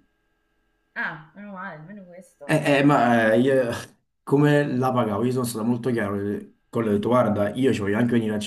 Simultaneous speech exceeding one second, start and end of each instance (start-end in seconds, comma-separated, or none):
none